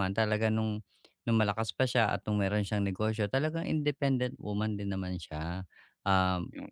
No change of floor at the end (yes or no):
yes